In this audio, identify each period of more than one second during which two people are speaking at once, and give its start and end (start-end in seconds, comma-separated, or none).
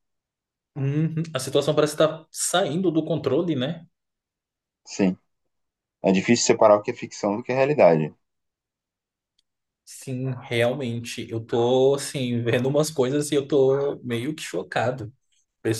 none